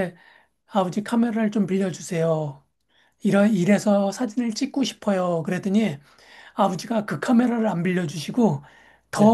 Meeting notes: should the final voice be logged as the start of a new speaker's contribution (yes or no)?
no